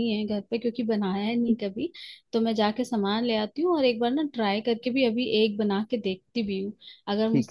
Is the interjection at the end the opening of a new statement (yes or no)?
no